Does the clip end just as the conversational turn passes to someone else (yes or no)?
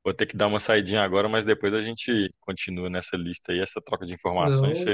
yes